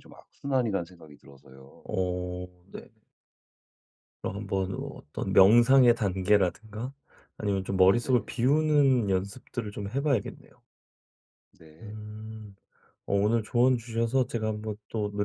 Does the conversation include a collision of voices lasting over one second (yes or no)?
no